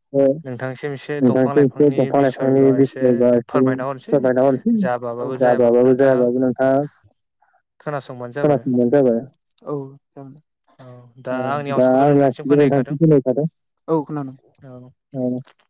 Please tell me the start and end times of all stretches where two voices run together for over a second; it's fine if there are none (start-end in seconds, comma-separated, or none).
1.2-3.1